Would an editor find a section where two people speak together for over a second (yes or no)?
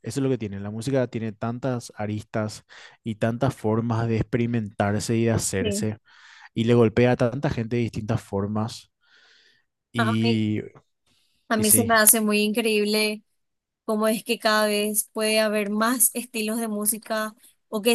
no